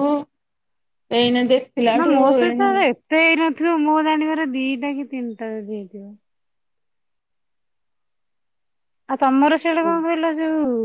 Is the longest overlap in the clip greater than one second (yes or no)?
no